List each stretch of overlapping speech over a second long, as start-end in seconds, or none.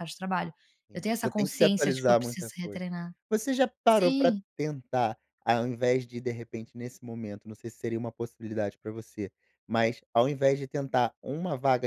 0.9-2.8